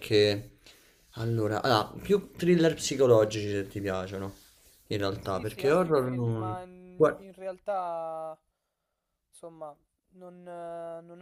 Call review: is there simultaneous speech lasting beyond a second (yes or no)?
yes